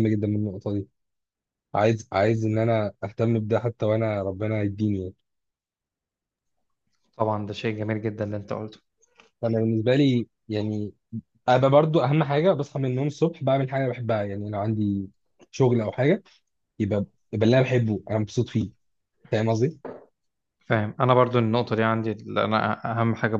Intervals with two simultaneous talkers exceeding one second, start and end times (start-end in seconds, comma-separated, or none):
none